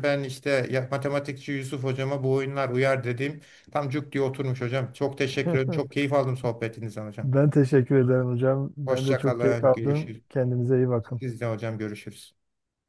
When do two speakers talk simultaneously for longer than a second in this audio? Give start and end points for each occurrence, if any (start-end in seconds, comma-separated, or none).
8.8-10.2